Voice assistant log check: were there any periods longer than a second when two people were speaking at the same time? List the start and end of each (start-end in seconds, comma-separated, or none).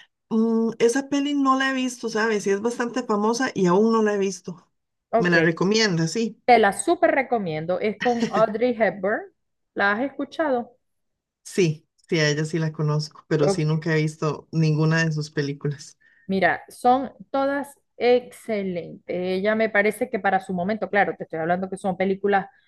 none